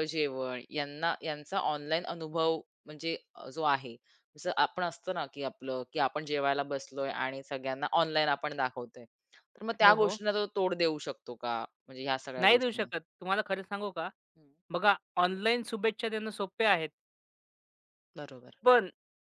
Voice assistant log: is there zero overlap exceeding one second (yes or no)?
yes